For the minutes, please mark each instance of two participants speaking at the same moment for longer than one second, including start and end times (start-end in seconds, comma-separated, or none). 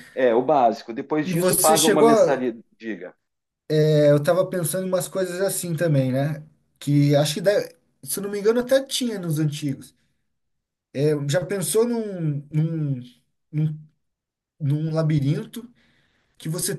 1.2-2.4